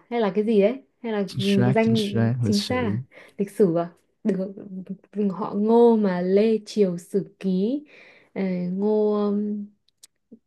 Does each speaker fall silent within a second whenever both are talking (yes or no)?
no